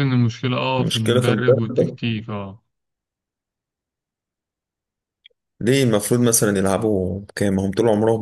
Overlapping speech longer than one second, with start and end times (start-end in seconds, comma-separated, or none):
0.8-2.0